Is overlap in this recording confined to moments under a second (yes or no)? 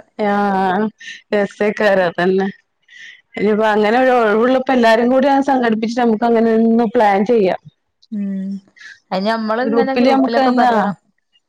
yes